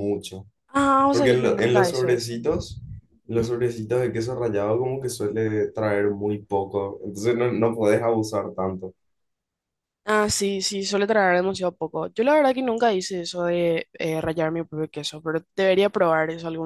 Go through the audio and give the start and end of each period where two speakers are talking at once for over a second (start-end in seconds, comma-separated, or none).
1.1-2.3